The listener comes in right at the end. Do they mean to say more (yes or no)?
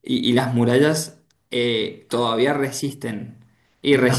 yes